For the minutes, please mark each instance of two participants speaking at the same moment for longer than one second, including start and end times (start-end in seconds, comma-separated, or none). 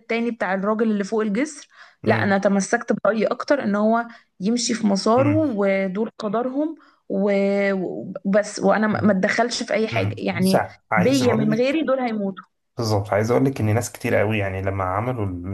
9.9-11.8